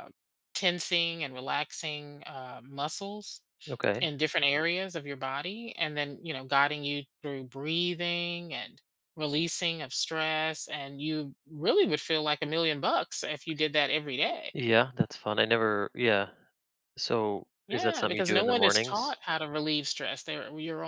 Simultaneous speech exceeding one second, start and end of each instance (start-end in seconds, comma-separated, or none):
17.7-19.2